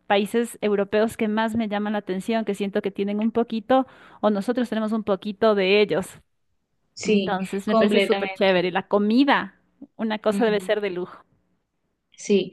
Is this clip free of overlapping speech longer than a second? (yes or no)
no